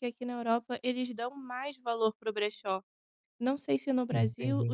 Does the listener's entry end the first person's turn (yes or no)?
no